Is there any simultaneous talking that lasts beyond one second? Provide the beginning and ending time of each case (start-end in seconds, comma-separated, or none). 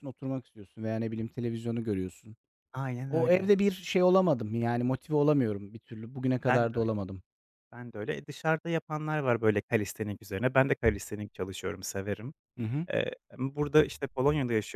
none